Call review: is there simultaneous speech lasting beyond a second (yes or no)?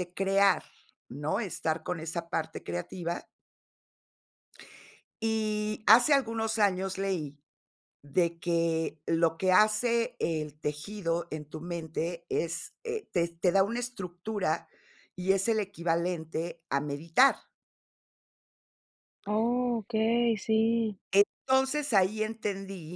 no